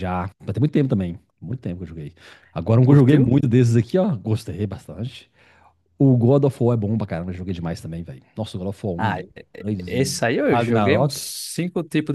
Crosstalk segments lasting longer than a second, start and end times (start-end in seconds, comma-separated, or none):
9.0-11.2